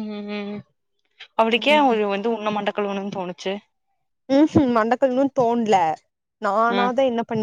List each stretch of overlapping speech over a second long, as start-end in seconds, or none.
none